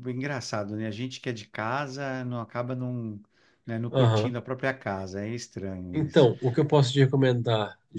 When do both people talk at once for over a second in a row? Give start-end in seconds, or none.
none